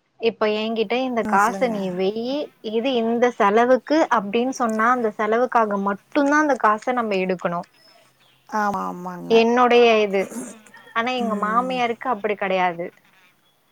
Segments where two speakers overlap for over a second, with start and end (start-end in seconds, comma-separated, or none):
none